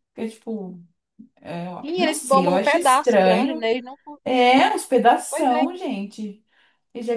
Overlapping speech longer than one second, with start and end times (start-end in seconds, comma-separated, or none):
1.8-3.7